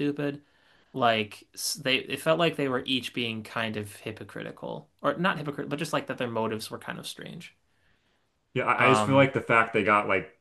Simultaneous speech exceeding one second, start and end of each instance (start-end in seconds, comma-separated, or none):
none